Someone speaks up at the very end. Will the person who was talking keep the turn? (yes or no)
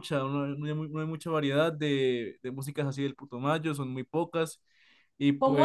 no